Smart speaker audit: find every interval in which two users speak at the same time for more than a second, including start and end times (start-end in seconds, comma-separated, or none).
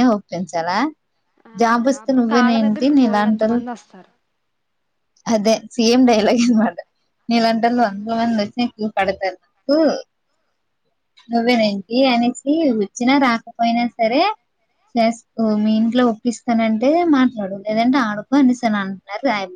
1.6-3.6